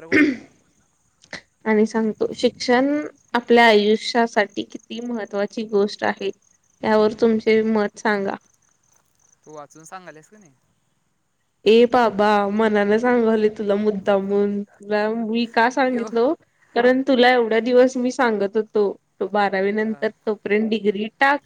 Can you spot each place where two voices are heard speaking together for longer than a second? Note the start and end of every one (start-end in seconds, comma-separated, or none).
none